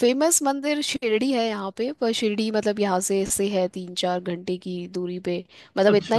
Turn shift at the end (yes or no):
no